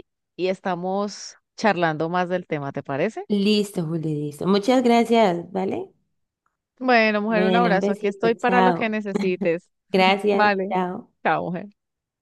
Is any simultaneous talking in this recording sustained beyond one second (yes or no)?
yes